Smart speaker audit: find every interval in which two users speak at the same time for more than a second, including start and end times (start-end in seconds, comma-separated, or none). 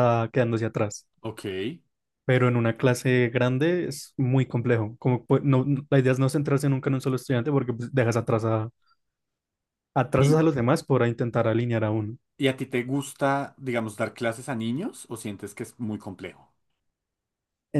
none